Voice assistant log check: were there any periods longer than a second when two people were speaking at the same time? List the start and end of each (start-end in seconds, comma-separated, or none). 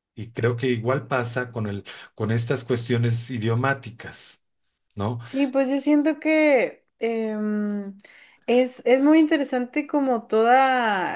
none